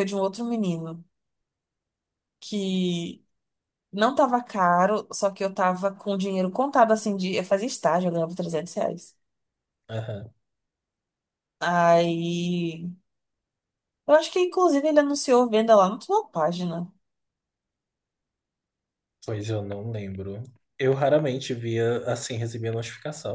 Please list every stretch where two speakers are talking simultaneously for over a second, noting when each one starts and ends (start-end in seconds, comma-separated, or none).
none